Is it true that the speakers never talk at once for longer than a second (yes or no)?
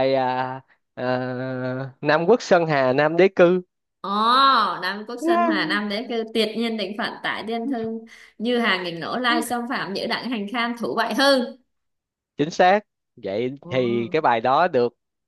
yes